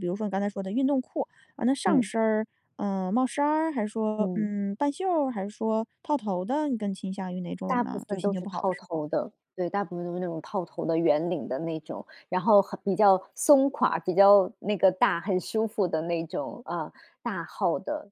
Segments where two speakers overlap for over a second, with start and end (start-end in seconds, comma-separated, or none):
7.7-9.0